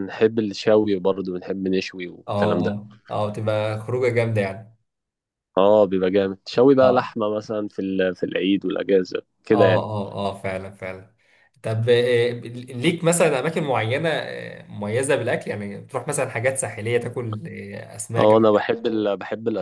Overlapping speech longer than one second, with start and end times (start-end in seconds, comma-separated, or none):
none